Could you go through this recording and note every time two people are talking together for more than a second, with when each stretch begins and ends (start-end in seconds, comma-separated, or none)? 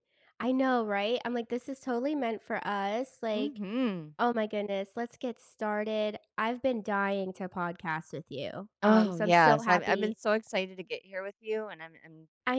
8.8-10.2